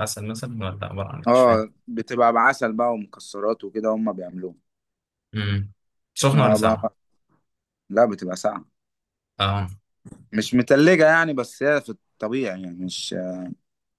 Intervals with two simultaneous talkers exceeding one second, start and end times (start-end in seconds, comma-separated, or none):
none